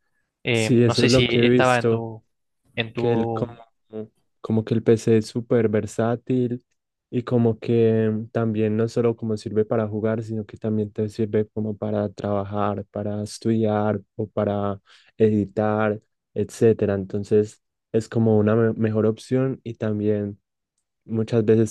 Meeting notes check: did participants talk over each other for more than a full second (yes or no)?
yes